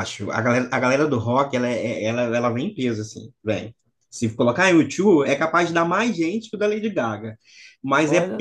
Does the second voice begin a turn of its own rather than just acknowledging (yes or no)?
no